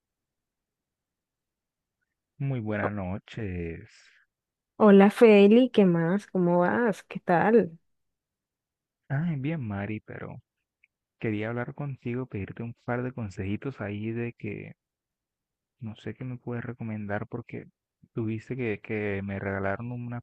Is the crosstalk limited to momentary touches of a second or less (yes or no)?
yes